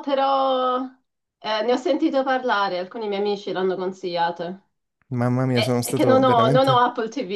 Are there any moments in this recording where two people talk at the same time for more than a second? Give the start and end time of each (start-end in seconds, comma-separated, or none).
5.5-6.8